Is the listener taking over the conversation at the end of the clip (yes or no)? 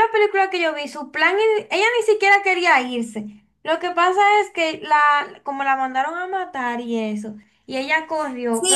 yes